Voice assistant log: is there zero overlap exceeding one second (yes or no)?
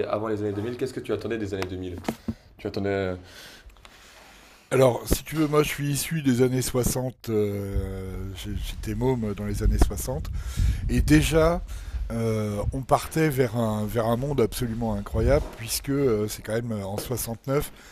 yes